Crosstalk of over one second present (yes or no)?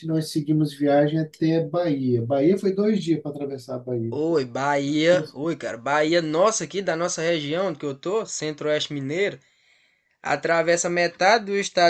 no